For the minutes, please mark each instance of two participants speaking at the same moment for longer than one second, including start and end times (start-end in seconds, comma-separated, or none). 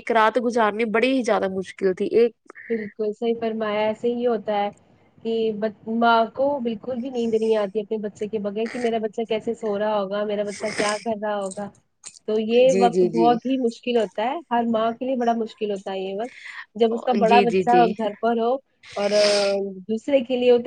none